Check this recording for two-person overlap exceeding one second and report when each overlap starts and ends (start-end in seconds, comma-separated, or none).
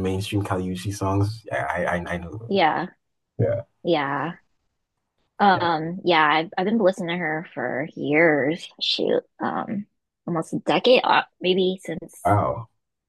none